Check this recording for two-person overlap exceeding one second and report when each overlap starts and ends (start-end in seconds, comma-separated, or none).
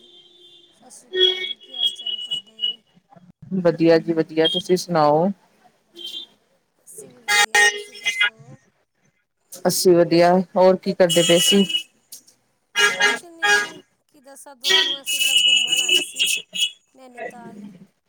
none